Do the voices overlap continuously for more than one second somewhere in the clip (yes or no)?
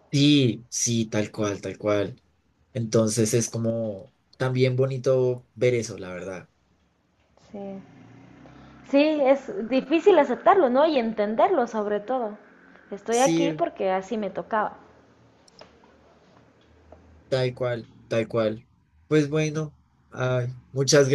no